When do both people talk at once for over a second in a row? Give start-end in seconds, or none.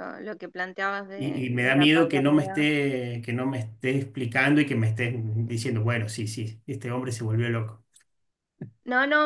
1.1-2.7